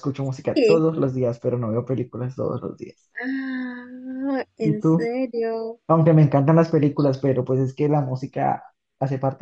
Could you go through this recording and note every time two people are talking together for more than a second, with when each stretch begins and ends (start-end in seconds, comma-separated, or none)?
none